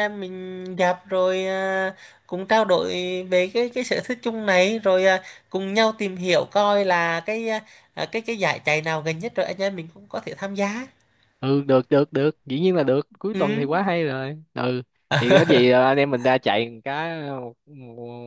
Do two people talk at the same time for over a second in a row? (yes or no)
no